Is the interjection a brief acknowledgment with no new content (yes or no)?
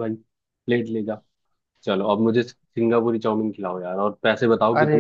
no